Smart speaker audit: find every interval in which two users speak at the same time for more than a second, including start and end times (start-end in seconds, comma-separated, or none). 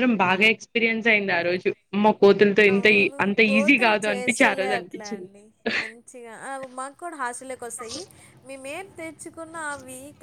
2.7-5.3